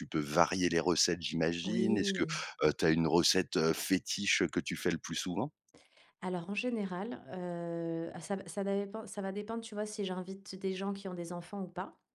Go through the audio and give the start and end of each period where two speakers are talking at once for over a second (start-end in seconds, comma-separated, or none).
none